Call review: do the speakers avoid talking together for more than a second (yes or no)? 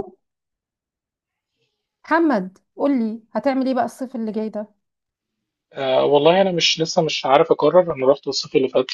yes